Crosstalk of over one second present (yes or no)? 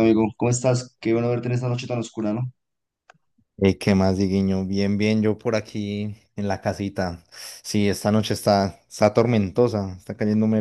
no